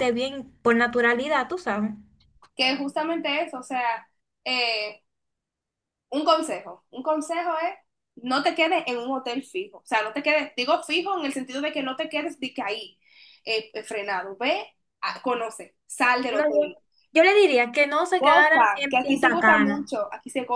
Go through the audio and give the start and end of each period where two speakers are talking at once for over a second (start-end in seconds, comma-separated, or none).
18.2-19.9